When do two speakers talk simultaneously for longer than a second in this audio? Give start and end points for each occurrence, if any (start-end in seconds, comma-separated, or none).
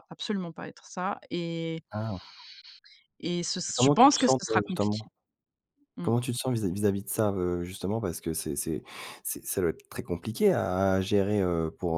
3.8-5.0